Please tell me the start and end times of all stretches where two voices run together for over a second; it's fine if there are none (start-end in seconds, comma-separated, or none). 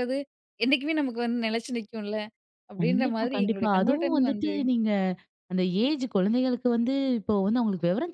2.8-4.5